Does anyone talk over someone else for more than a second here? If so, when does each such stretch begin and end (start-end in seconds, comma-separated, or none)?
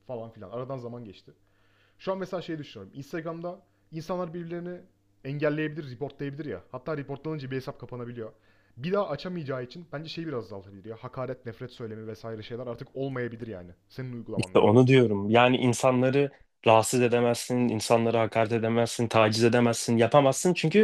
none